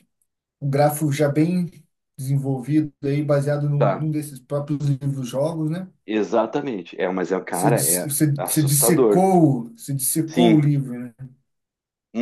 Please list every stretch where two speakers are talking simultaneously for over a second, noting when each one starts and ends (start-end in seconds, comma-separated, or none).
7.5-9.3